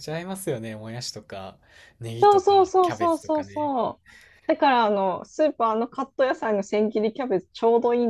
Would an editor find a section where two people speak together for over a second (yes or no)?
yes